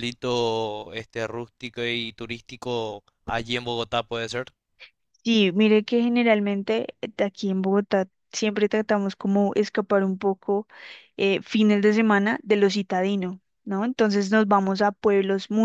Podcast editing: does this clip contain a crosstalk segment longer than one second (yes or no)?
no